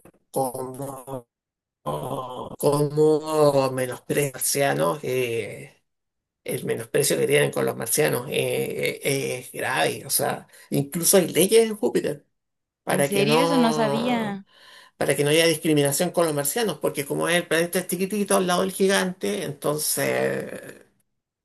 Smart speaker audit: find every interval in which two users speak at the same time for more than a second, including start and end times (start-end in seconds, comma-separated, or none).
12.9-14.4